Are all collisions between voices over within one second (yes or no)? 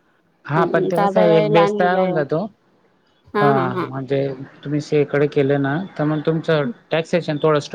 no